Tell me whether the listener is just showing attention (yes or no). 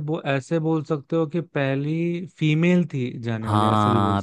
no